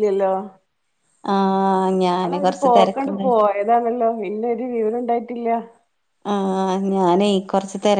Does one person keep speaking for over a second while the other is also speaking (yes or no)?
yes